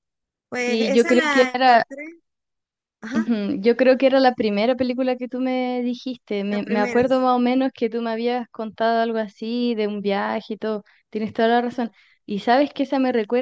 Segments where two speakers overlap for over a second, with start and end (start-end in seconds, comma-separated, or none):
0.5-1.8